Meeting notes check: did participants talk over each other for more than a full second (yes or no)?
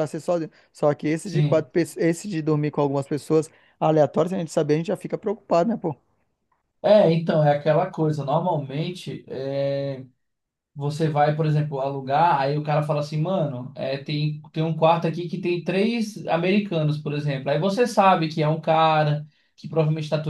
no